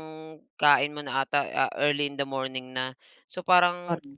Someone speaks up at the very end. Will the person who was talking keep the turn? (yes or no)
yes